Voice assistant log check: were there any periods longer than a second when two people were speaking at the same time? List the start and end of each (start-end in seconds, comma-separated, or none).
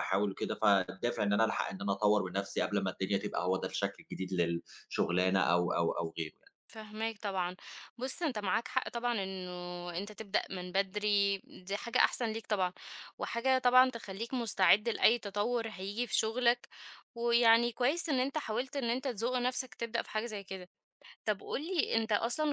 none